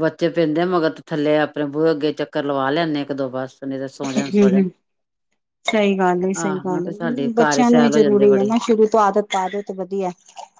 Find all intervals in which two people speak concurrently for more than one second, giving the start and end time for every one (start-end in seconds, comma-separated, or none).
6.8-8.5